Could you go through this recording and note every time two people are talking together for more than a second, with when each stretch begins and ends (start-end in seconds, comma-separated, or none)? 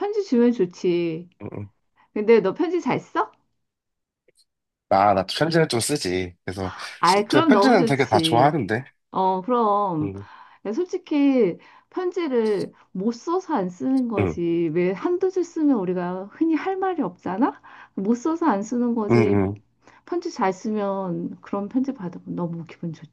7.3-8.6